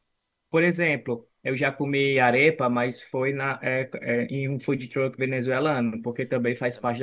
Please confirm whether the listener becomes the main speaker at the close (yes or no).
no